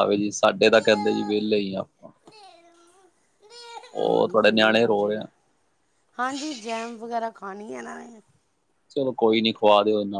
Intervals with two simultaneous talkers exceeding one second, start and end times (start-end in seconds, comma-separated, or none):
4.0-5.2